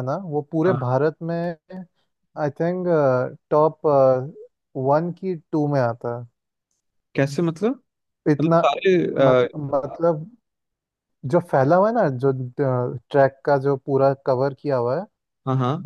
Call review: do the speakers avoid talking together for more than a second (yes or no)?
yes